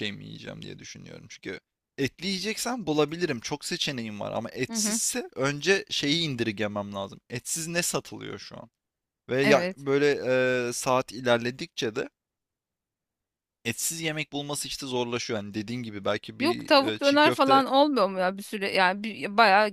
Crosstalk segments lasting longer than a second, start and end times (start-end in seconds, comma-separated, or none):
16.4-17.6